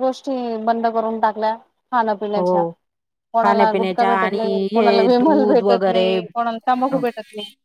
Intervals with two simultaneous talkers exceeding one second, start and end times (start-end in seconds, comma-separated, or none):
3.4-6.1